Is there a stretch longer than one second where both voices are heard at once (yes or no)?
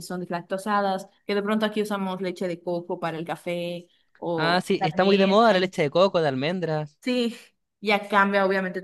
yes